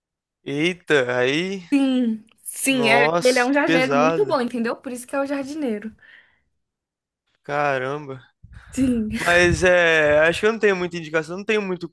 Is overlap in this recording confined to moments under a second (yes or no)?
no